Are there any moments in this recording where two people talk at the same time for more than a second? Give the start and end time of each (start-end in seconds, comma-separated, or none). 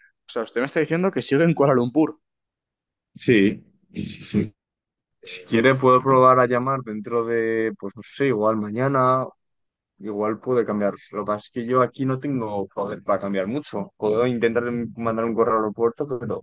none